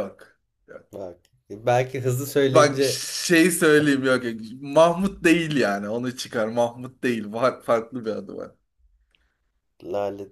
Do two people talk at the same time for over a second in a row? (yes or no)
no